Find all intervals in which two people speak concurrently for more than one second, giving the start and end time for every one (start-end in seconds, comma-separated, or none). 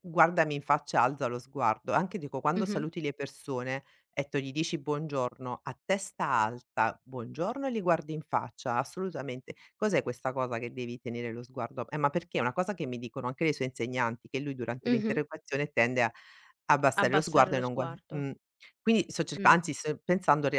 16.9-18.3